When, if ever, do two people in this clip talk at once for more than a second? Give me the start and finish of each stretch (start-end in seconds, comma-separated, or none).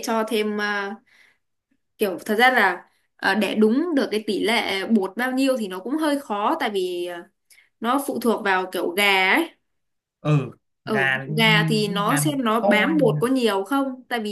10.9-13.2